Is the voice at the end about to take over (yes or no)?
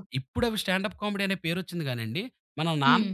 no